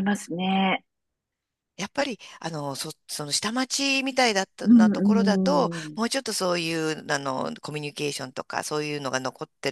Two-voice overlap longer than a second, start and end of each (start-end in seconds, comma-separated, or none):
4.6-6.0